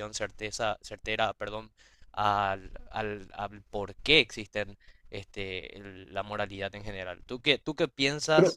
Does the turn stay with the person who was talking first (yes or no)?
yes